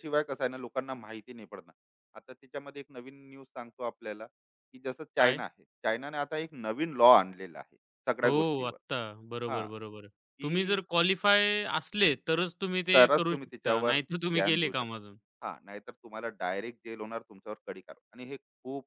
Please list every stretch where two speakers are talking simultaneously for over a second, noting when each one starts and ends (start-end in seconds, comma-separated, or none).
12.9-15.2